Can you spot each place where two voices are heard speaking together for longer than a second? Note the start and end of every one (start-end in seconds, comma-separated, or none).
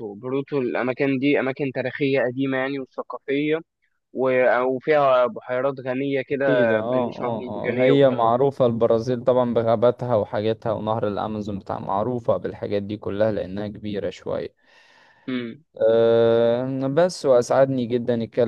6.3-8.3